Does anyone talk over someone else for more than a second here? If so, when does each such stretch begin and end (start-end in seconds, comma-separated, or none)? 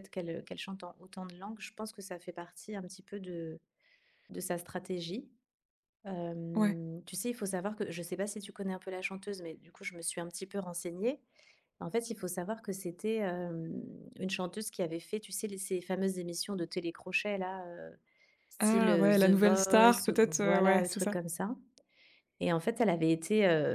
18.6-21.2